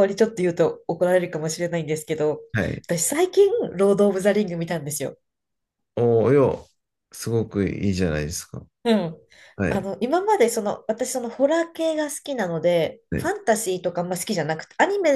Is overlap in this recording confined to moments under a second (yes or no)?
yes